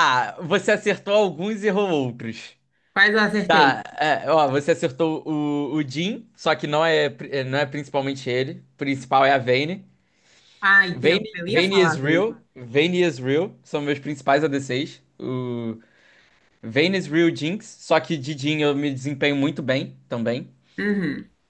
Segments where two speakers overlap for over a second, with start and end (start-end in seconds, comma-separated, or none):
10.9-12.4